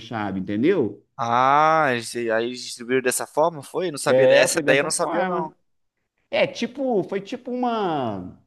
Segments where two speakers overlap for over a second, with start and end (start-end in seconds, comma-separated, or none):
4.0-5.5